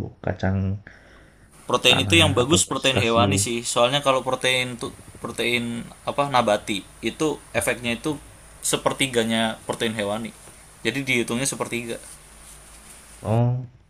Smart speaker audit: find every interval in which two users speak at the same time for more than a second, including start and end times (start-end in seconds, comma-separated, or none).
1.9-3.4